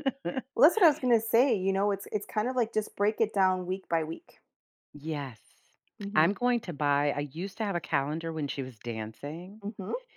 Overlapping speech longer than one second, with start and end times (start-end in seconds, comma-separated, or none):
none